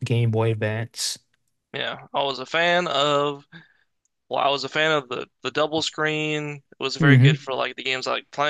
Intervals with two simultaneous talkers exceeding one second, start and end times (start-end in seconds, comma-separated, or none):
none